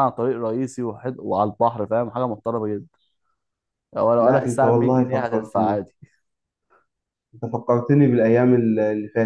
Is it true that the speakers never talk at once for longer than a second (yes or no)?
no